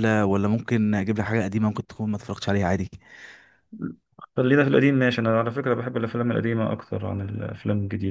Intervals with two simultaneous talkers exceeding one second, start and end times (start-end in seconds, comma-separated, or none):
none